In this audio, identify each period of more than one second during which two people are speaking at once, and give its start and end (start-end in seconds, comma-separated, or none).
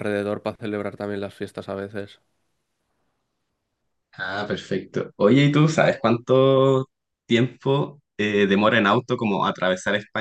none